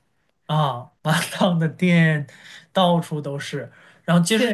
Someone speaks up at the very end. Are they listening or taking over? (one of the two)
listening